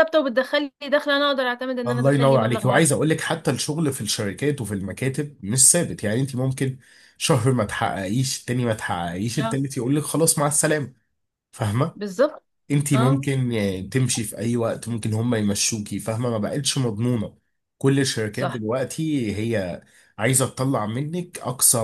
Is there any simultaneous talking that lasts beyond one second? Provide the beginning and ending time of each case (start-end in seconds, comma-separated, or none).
1.9-3.1